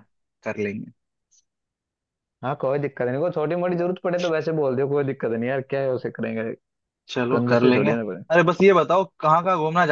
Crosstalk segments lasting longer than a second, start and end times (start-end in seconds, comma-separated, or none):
none